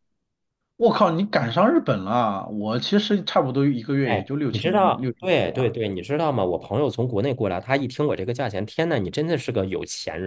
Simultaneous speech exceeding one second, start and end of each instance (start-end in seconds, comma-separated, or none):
4.0-5.8